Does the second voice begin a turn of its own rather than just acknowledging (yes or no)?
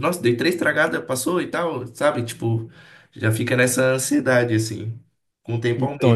yes